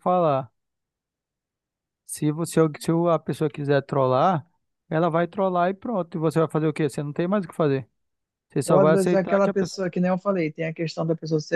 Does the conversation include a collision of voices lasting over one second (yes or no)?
yes